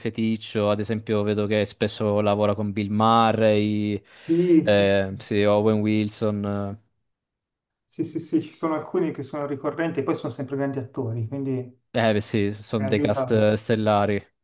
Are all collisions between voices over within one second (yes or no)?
no